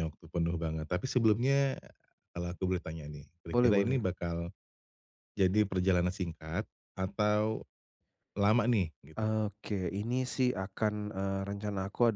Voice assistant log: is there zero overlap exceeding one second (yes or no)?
yes